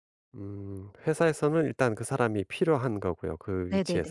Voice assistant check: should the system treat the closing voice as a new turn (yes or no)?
yes